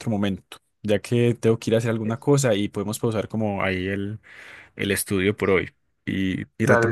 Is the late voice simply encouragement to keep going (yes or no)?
no